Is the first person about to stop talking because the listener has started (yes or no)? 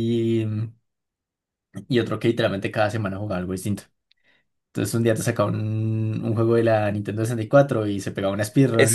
yes